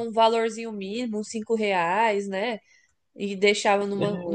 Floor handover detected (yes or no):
no